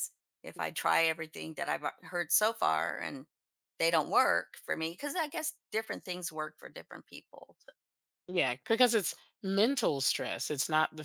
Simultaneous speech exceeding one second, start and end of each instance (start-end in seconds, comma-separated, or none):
none